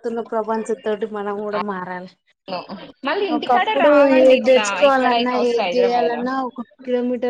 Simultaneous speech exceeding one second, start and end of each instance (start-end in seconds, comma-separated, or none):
3.4-6.2